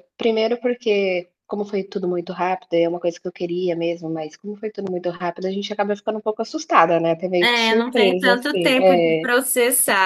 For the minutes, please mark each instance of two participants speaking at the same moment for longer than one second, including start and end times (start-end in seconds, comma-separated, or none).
7.4-9.3